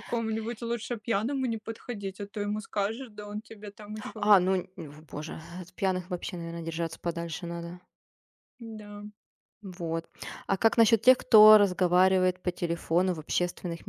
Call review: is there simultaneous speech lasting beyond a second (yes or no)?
no